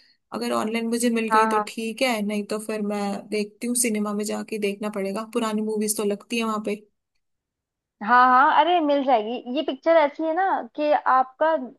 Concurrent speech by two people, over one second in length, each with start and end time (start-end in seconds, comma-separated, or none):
none